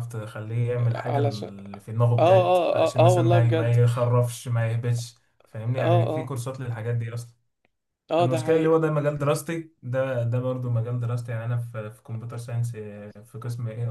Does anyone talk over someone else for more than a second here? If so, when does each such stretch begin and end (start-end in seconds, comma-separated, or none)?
2.2-3.8